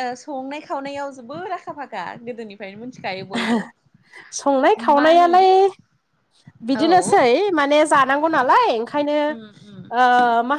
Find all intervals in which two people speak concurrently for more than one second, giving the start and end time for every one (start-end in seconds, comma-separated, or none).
none